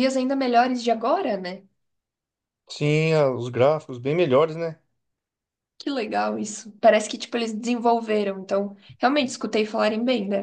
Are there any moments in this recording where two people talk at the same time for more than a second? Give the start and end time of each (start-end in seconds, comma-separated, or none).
none